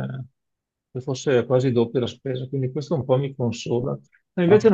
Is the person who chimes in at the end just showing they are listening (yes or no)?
yes